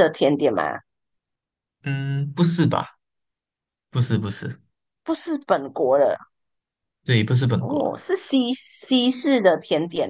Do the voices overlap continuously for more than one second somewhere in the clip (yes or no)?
no